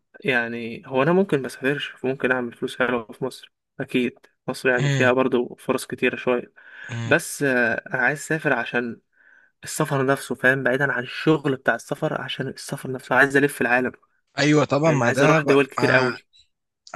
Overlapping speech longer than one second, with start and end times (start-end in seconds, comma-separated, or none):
14.8-16.2